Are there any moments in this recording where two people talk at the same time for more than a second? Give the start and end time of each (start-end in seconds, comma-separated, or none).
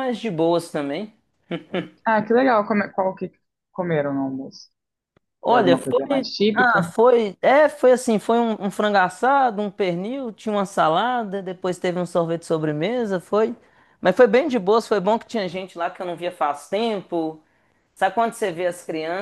5.5-6.9